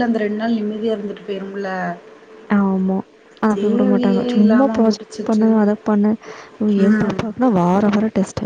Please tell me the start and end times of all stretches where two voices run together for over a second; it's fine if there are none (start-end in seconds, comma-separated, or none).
3.5-5.5